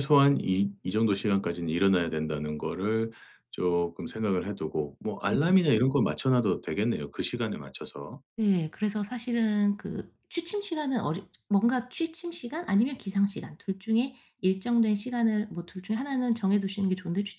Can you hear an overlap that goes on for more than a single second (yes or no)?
no